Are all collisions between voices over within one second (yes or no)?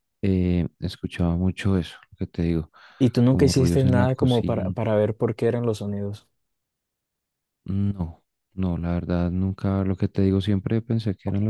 no